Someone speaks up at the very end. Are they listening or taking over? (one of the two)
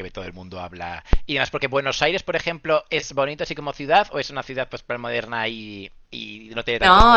taking over